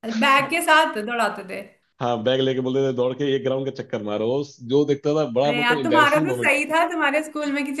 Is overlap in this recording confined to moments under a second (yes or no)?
no